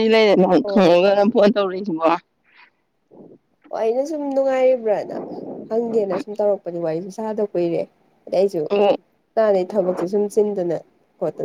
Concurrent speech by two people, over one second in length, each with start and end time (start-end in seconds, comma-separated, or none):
none